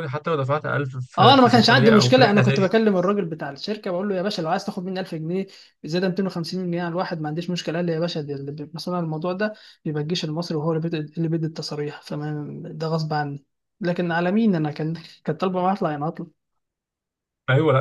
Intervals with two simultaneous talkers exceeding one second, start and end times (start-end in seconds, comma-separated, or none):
1.1-2.7